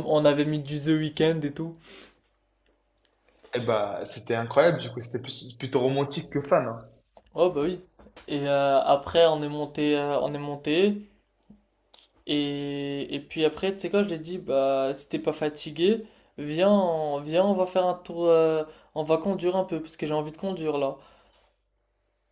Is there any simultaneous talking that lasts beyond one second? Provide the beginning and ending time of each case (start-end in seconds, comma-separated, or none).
none